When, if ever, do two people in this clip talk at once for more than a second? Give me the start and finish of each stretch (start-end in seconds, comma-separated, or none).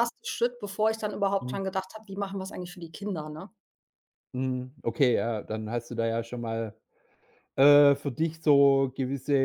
none